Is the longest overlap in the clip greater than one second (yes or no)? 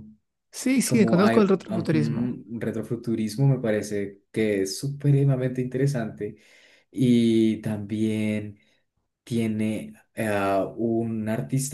yes